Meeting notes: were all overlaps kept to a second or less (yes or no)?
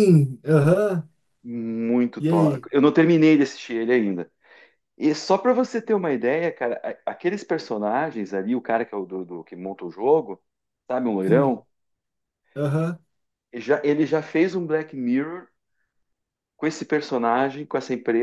yes